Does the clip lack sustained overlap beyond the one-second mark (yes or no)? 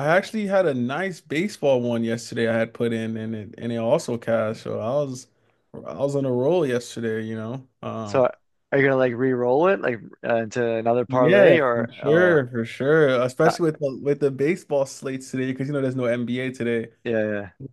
no